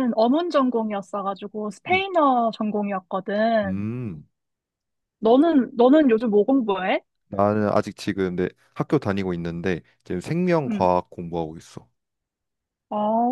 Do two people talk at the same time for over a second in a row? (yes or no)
no